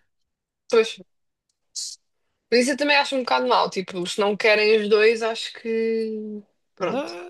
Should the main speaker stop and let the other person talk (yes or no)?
yes